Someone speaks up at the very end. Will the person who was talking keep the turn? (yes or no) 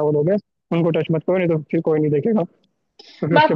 no